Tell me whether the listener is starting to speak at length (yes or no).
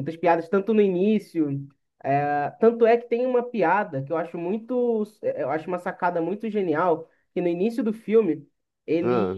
no